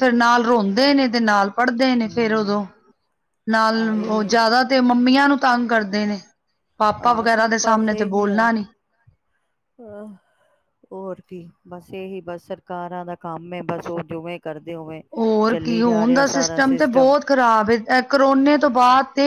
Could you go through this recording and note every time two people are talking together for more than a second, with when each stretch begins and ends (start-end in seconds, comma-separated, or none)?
none